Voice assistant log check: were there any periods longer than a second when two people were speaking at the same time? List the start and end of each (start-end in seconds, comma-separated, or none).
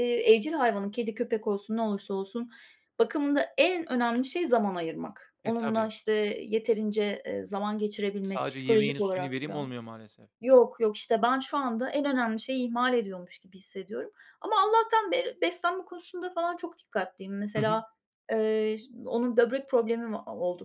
8.2-9.7